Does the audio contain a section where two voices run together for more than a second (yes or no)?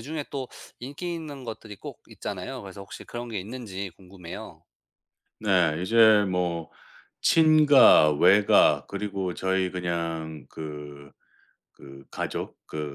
no